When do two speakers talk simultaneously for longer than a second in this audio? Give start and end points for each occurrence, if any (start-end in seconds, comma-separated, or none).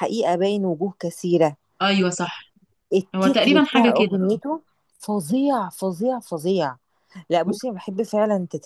3.2-4.4